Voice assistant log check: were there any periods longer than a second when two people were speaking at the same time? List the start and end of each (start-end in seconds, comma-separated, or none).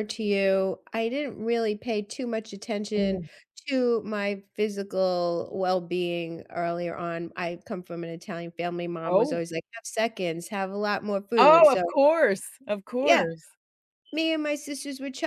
none